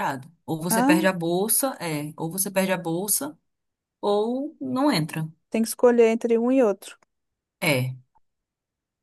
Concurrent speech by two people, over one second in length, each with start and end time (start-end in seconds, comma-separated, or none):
none